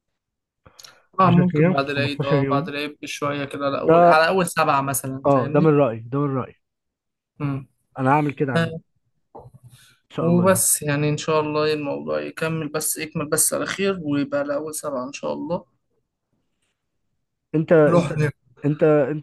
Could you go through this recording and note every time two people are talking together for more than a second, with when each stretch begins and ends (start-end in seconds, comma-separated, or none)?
1.2-2.7